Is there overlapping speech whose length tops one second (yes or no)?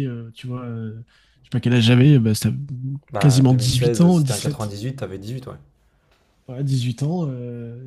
yes